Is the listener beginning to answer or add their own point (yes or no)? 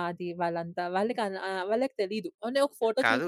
yes